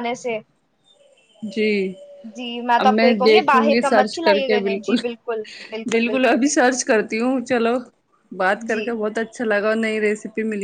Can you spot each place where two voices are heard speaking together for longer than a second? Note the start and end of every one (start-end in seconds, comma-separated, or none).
2.8-5.0